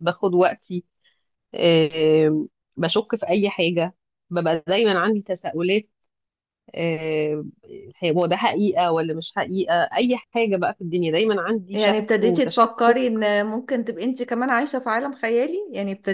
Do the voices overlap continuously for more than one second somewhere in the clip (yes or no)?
yes